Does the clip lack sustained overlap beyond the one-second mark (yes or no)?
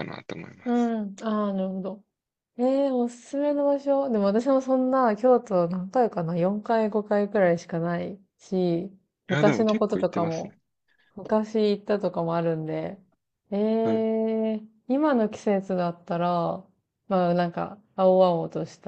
no